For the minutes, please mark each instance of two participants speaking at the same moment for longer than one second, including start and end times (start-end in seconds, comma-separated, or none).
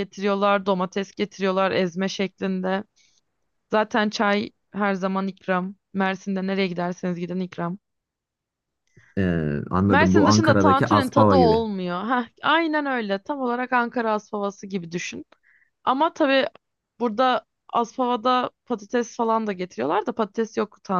9.9-11.6